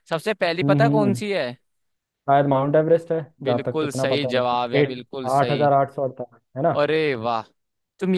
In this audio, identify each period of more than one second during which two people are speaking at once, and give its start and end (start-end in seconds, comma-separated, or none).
3.4-5.7